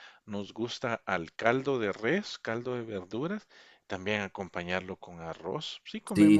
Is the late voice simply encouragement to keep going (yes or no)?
no